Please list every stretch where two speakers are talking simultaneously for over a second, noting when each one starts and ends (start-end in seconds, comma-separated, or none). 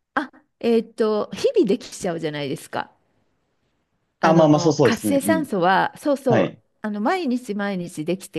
4.2-5.5